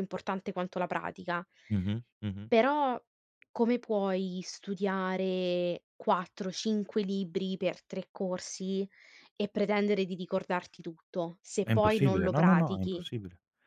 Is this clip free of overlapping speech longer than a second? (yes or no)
no